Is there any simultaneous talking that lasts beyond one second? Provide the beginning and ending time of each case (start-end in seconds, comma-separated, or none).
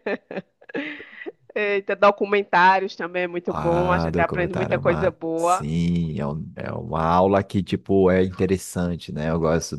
3.5-5.7